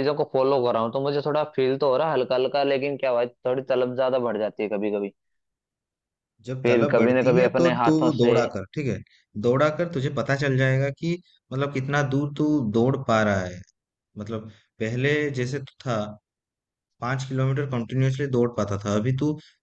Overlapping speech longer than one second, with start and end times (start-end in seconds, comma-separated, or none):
6.6-8.3